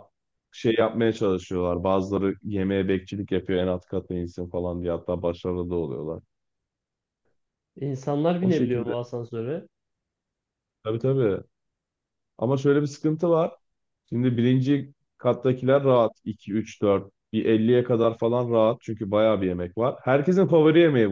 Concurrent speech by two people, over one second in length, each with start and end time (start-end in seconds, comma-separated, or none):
none